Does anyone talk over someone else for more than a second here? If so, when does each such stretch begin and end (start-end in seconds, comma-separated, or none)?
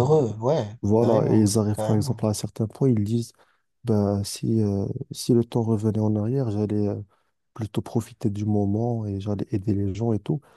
1.0-2.3